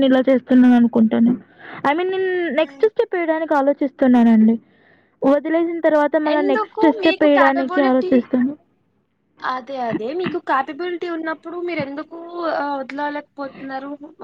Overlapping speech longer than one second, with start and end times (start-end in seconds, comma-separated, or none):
6.4-8.1